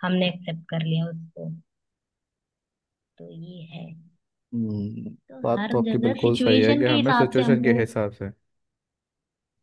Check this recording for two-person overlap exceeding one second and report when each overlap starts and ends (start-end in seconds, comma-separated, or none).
5.3-7.8